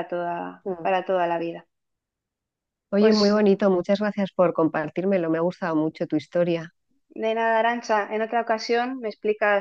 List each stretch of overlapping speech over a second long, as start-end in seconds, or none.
none